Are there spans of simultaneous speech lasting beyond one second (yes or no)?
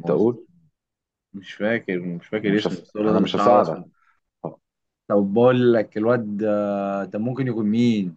yes